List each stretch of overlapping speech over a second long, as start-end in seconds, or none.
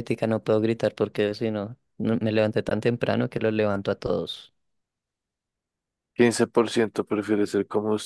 none